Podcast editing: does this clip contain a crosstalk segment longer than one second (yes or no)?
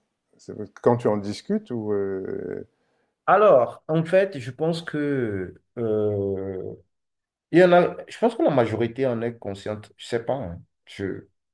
no